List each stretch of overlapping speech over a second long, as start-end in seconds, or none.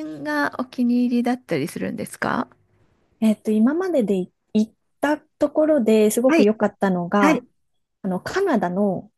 none